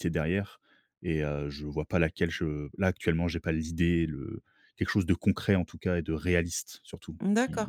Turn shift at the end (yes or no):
yes